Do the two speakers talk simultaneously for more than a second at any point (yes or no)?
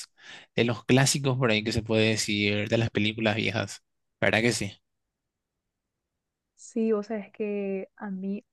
no